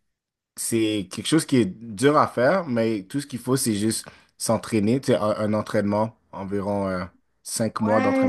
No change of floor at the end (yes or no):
no